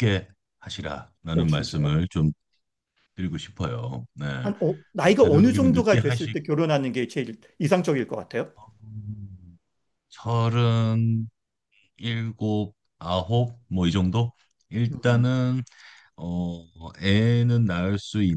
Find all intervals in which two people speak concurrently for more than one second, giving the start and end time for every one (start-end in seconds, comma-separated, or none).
5.0-6.4